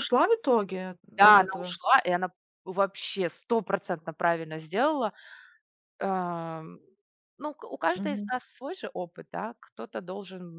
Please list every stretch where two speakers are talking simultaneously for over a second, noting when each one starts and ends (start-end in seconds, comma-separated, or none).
none